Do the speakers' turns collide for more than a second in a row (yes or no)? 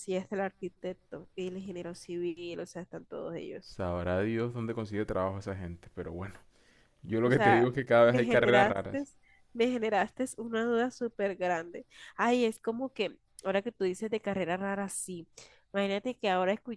yes